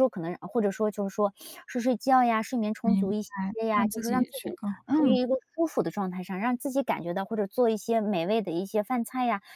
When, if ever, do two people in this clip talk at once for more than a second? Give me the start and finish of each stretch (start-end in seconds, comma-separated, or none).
2.8-5.2